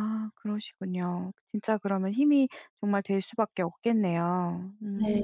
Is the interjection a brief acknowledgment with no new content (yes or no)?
no